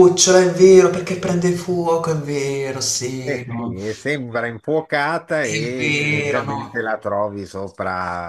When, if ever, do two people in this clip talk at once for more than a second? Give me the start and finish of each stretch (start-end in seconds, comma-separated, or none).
5.4-6.7